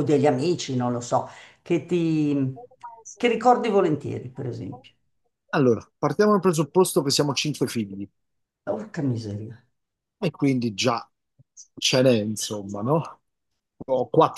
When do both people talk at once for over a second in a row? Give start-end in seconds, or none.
none